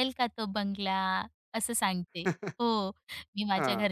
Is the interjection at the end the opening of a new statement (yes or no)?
no